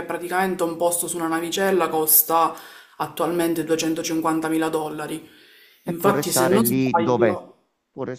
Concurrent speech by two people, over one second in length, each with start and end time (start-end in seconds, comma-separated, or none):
5.9-7.4